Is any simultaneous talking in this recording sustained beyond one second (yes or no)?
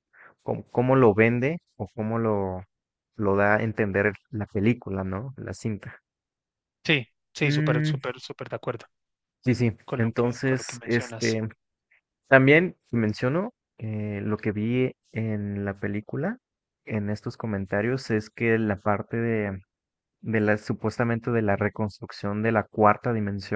yes